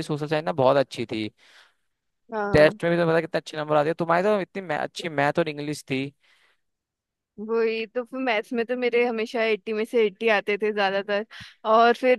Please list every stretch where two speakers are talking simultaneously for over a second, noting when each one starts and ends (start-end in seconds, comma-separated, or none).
none